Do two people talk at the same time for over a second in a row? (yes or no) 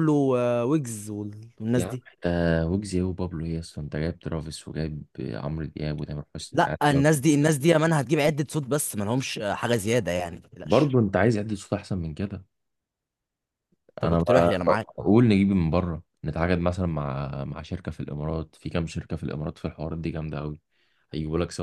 no